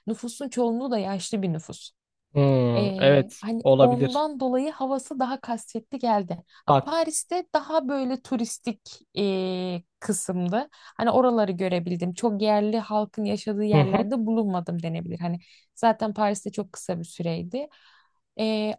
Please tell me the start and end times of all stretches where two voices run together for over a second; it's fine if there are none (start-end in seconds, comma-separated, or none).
2.8-4.3